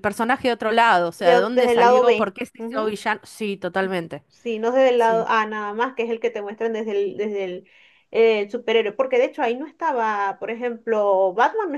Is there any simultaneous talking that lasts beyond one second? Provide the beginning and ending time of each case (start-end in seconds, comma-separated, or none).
1.2-2.9